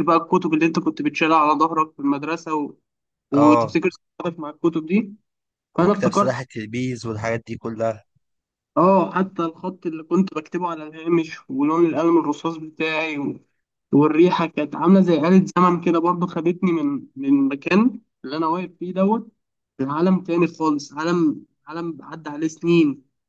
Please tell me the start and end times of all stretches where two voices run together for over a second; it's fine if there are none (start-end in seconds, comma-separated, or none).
none